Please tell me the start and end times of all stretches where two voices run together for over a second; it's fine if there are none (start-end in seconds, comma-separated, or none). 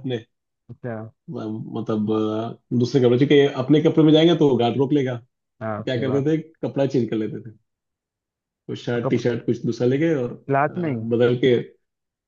none